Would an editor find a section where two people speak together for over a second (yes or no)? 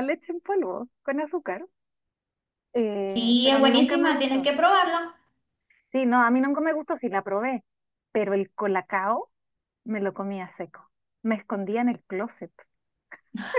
yes